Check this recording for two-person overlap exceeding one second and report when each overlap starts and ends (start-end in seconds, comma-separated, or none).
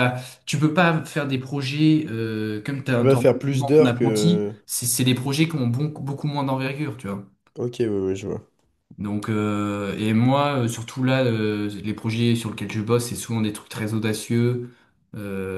2.9-4.5